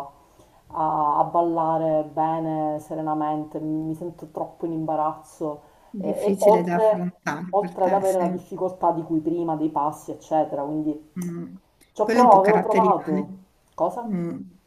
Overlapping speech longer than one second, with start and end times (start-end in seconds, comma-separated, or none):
6.0-8.5, 12.0-13.2